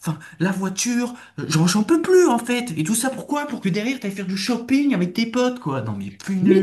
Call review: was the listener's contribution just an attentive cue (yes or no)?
no